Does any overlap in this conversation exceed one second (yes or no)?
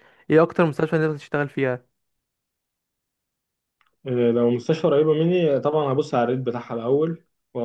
no